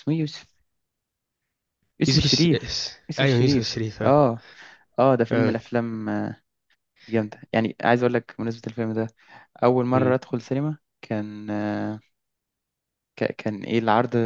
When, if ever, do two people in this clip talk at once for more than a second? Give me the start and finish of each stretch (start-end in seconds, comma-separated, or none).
2.1-4.1